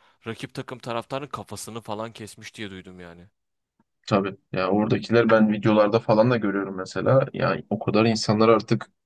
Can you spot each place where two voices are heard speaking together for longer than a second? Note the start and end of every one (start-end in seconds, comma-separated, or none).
none